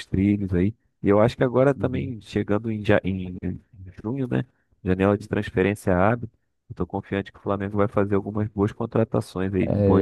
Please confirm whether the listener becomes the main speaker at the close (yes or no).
yes